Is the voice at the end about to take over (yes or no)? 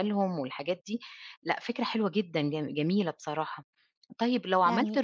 no